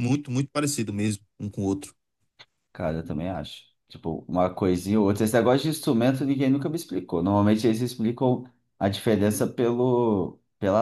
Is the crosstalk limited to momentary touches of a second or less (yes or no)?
yes